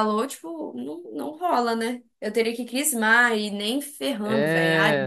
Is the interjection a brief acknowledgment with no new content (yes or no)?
no